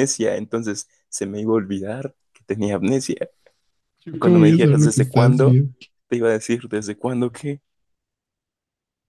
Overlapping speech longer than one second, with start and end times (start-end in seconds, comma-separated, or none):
4.2-5.6